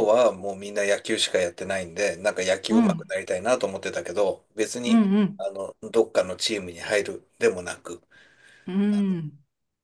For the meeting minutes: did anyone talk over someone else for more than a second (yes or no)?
no